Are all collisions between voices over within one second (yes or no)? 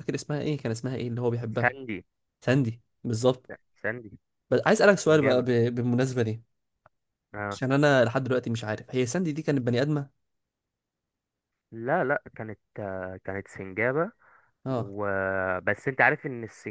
yes